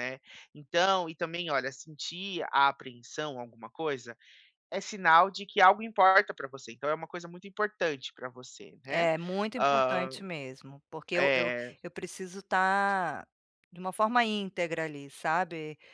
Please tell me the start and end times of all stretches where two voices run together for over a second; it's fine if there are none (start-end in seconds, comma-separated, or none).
none